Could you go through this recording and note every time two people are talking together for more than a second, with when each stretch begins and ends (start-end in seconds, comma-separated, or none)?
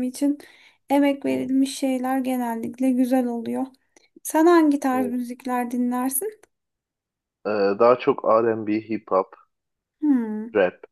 none